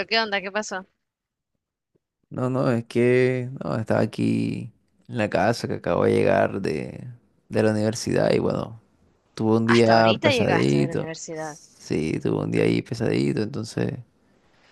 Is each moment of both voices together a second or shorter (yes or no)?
no